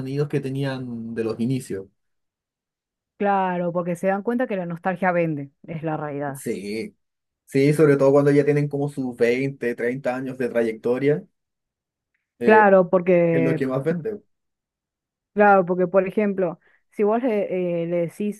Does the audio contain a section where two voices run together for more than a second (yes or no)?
no